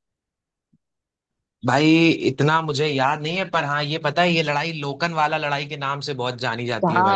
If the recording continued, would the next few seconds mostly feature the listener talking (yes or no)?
yes